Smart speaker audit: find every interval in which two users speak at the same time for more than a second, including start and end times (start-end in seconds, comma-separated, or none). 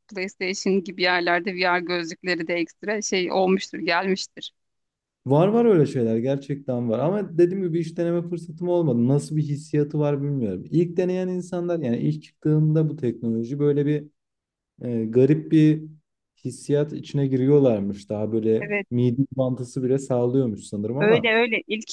none